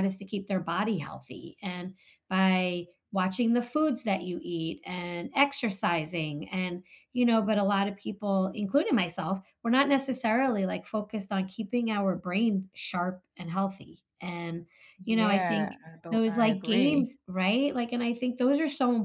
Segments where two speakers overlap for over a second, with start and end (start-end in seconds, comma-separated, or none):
15.0-17.1